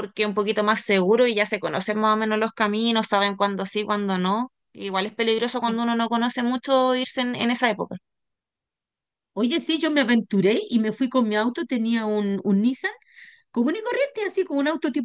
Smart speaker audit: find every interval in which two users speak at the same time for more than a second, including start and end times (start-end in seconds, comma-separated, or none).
none